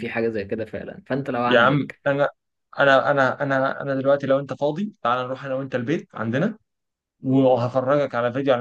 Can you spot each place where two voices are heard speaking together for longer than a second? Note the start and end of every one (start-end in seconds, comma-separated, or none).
none